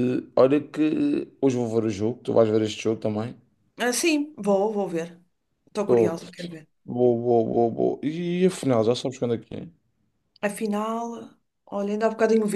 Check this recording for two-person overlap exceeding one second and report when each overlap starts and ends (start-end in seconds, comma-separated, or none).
none